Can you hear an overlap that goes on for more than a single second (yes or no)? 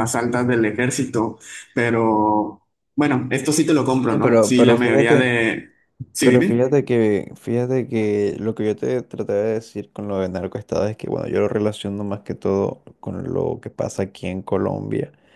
yes